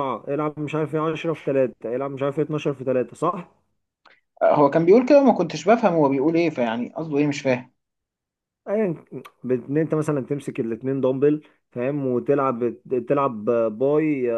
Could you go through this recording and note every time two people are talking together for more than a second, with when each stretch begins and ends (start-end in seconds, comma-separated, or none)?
none